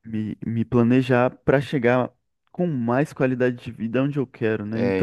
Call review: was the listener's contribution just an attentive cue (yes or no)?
no